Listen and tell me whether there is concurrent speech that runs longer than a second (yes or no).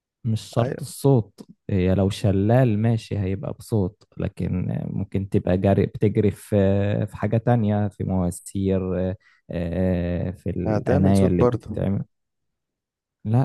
yes